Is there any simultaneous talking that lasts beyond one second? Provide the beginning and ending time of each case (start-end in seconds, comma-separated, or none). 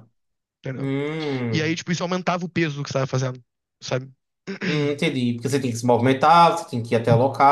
none